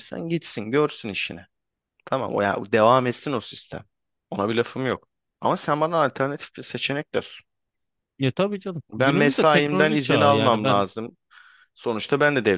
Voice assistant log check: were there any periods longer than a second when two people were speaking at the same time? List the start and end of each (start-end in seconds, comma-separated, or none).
8.9-10.8